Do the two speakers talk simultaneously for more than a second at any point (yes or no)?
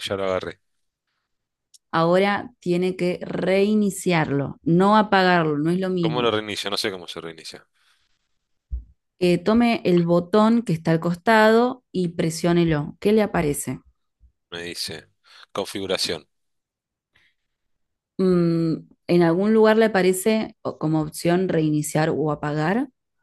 no